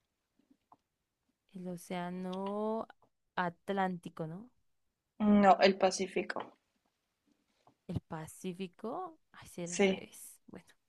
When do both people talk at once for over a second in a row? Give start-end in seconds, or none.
none